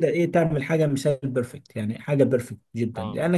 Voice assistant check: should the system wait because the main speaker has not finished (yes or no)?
yes